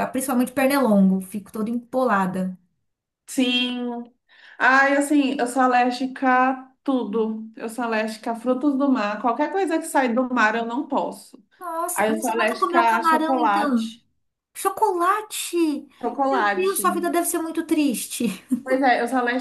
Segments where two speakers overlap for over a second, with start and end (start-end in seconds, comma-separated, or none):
11.9-13.9